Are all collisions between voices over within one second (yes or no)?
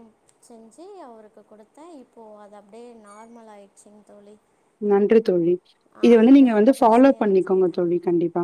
no